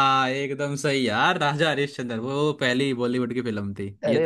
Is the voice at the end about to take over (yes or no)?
yes